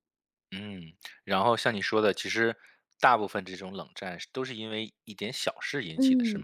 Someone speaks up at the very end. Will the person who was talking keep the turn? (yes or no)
no